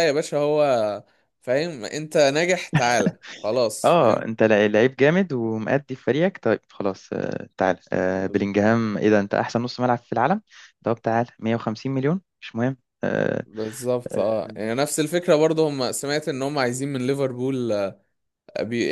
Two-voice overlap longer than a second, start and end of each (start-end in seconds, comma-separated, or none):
none